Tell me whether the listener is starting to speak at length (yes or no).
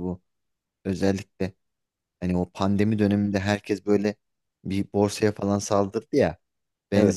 no